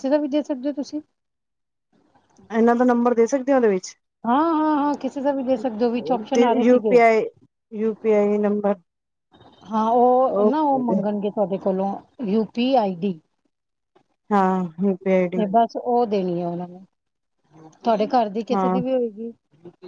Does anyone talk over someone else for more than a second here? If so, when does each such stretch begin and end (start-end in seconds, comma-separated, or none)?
none